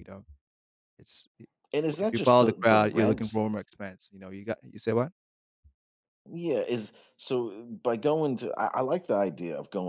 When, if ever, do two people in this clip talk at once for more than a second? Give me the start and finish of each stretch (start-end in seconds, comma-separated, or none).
2.0-3.4